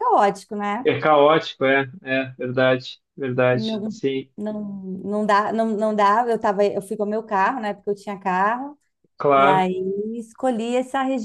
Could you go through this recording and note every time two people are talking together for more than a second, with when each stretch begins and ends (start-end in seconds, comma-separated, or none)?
none